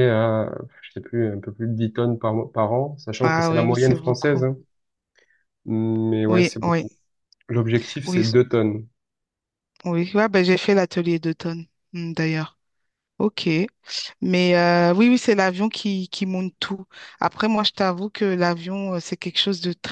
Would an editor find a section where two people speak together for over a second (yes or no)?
yes